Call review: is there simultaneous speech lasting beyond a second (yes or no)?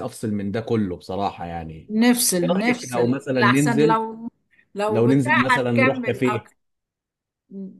yes